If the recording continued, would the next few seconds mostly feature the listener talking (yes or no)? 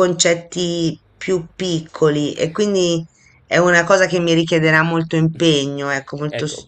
yes